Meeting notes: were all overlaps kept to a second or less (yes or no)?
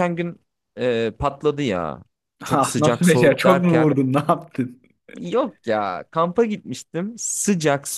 no